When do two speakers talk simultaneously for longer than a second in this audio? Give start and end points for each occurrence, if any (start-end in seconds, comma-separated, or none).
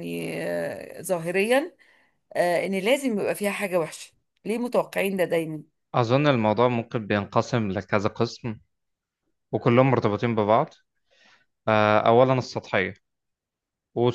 none